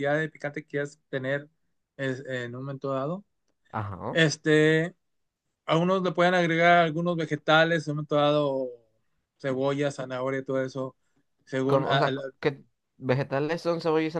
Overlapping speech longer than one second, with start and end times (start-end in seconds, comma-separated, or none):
none